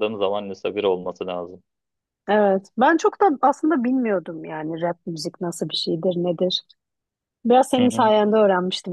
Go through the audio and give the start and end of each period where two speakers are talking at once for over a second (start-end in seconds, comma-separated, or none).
none